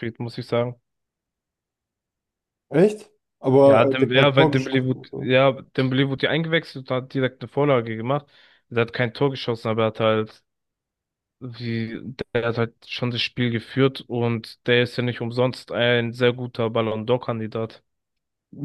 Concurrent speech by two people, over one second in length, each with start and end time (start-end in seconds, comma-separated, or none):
3.6-5.1